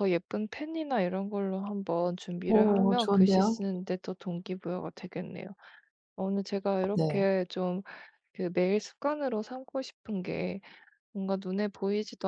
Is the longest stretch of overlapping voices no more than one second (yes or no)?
no